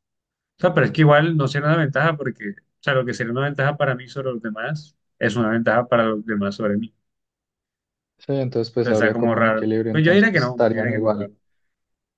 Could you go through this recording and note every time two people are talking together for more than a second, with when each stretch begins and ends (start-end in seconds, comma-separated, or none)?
8.8-11.3